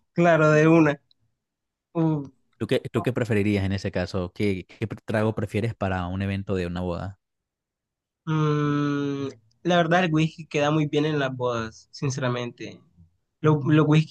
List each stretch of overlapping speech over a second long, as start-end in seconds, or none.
none